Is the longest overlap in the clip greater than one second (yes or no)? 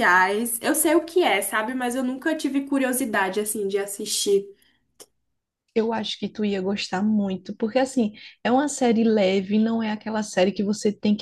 no